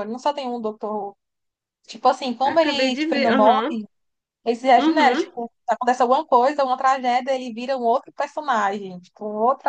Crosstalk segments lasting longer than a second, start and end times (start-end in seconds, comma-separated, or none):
2.4-3.7